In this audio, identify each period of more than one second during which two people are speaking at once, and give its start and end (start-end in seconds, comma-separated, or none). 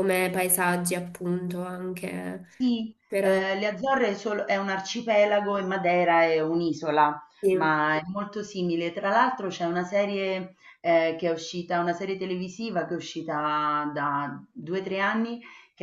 none